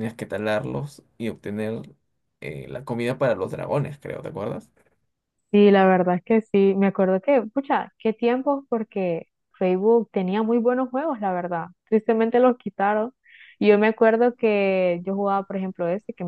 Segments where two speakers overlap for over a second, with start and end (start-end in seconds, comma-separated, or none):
none